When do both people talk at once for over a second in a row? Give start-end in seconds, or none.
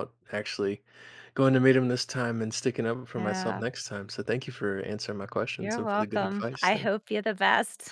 5.6-6.9